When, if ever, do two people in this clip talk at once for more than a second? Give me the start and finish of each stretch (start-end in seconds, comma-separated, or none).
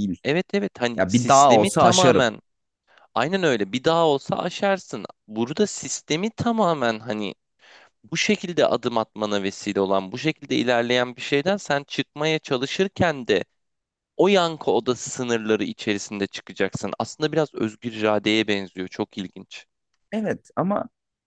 1.0-2.3